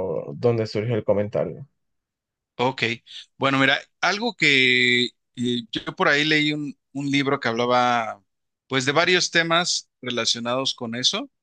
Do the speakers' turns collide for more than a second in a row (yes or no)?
no